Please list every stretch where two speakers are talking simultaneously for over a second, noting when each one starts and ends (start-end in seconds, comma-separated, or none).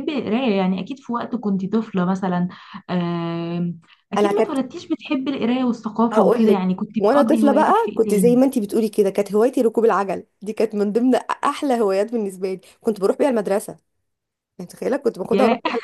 6.1-8.4